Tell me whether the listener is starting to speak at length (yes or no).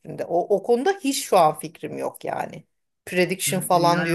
yes